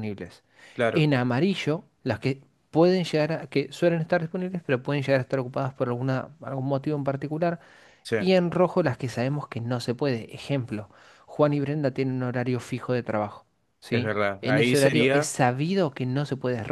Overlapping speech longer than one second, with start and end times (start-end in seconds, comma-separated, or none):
13.9-15.3